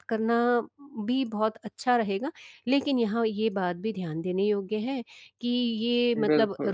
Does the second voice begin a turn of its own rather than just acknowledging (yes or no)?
no